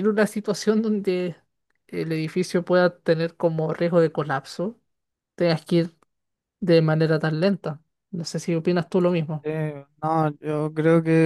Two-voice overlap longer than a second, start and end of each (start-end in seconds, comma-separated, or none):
none